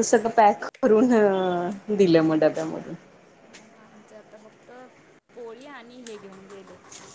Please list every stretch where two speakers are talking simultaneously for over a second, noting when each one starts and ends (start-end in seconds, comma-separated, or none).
none